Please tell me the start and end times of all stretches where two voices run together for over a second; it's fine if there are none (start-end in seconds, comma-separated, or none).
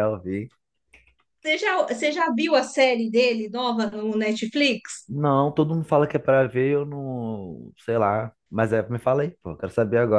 none